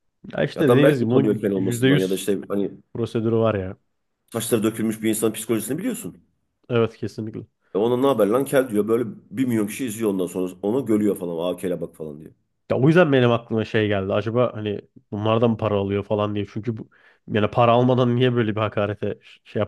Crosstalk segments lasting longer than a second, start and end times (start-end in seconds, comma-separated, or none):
0.6-2.3